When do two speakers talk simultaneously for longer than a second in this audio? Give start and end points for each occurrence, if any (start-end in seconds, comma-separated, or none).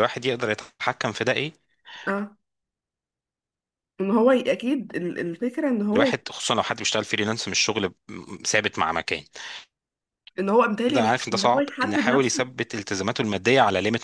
10.9-12.4